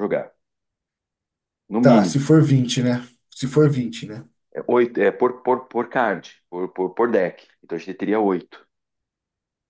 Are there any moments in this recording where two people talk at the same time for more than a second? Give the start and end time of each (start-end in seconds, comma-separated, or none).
none